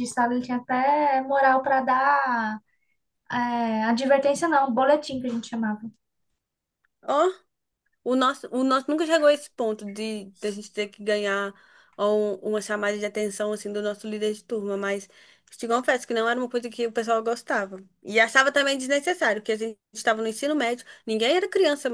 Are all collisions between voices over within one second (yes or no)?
yes